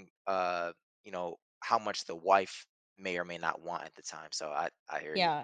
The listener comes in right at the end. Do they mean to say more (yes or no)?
yes